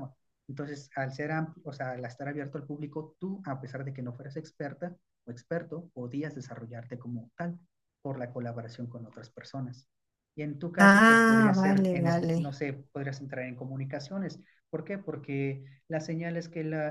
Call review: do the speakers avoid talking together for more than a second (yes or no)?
no